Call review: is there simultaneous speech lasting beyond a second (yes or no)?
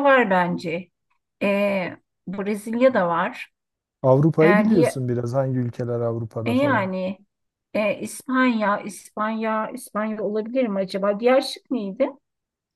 no